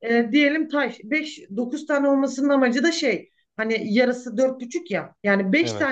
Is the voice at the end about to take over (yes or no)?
no